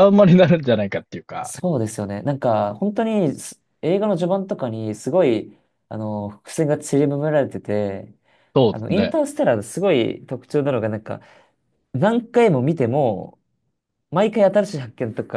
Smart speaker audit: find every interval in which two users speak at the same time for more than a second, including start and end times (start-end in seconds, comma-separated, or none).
none